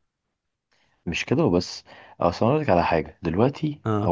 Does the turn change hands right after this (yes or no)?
no